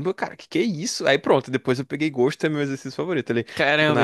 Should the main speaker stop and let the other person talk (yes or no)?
yes